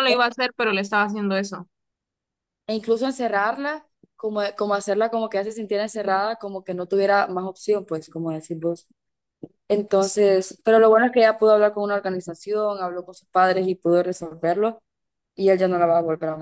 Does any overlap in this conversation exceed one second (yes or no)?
no